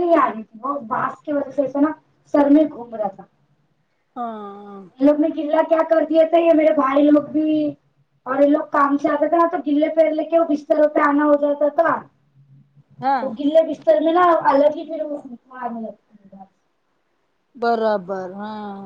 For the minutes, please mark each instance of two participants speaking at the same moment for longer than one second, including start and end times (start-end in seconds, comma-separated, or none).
none